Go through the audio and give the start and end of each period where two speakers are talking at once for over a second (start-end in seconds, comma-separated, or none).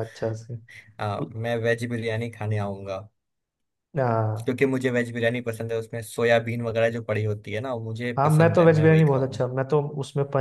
8.2-9.5